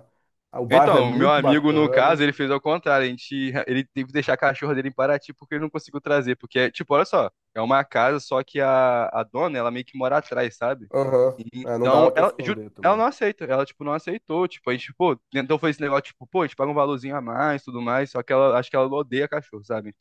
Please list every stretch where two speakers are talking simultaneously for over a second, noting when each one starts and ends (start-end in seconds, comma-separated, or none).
0.7-2.2, 11.6-13.1